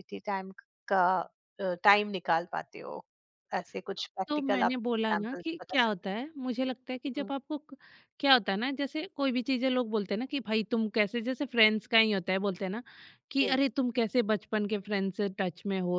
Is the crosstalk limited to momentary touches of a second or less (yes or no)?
no